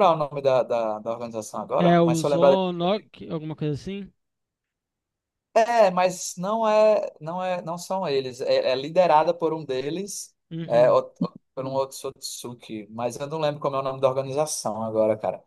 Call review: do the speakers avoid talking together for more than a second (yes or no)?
no